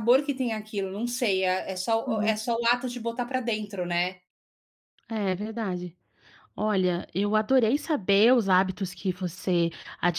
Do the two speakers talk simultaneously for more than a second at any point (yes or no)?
no